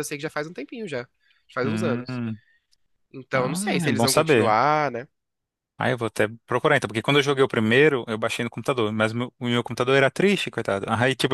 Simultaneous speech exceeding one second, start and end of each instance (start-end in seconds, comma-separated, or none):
3.3-4.6